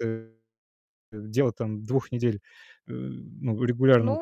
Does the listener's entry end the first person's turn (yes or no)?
yes